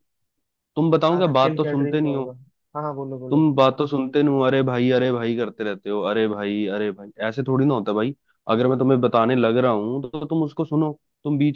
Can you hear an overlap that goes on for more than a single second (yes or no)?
yes